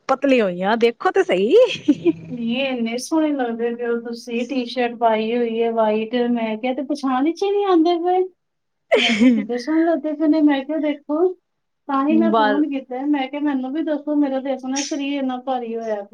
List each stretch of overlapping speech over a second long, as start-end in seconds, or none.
none